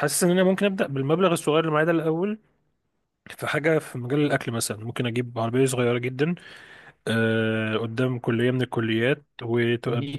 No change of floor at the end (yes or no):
no